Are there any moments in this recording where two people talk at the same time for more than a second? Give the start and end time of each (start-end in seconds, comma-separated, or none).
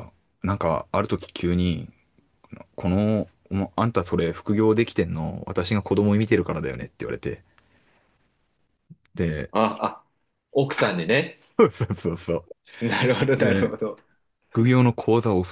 none